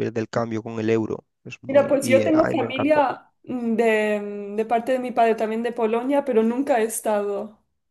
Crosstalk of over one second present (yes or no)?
yes